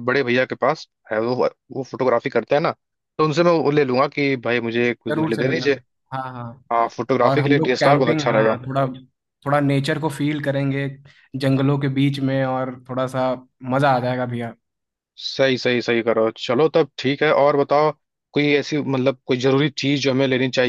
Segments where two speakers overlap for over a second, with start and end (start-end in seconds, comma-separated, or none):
7.2-8.6